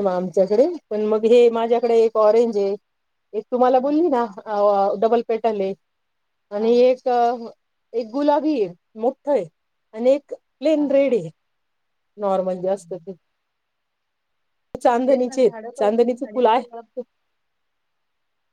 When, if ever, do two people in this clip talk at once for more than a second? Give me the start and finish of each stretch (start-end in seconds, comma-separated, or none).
15.1-16.6